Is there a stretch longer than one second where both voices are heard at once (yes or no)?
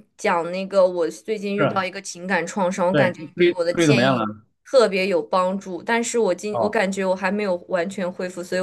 yes